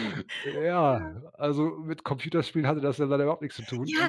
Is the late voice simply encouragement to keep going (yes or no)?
no